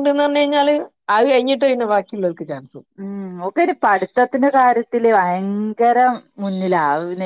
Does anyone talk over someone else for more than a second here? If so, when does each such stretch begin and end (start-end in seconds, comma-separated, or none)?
none